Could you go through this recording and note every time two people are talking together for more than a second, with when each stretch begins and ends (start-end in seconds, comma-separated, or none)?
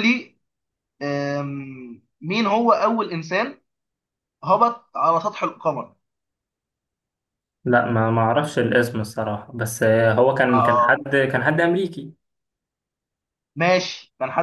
none